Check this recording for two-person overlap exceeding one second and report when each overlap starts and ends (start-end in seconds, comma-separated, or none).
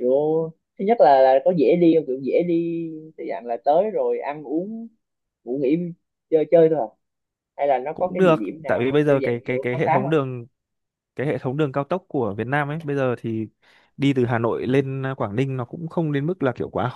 7.9-10.1